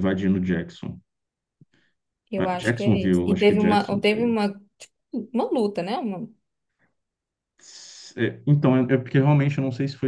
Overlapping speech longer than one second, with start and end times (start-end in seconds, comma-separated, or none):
2.4-4.3